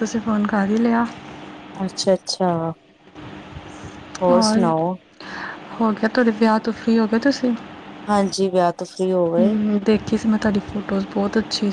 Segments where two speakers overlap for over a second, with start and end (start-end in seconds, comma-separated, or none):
none